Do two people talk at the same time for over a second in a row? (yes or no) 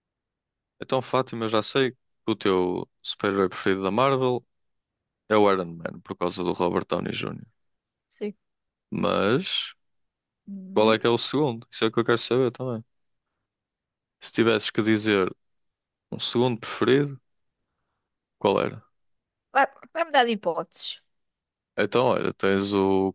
no